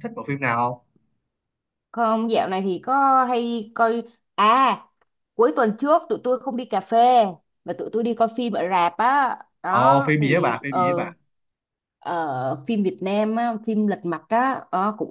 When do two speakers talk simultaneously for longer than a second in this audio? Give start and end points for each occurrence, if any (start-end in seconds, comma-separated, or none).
9.7-11.1